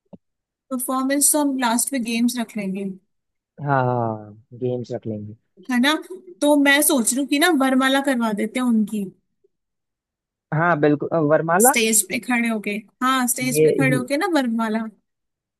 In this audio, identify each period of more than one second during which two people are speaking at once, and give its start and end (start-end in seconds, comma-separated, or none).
none